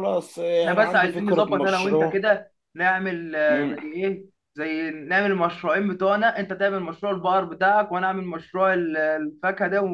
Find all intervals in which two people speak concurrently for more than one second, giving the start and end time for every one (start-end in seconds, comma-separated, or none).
0.6-2.2